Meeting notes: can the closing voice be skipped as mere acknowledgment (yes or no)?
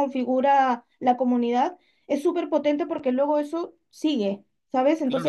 no